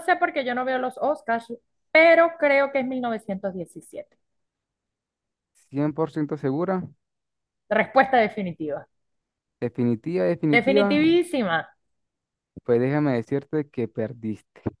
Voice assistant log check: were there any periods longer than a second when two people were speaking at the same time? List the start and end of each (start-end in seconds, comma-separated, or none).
none